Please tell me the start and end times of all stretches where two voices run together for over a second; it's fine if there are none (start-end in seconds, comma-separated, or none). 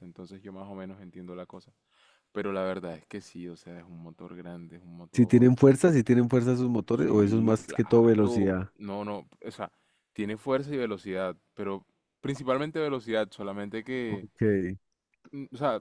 6.9-8.7